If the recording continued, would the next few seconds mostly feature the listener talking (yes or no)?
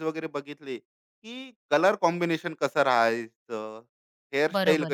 no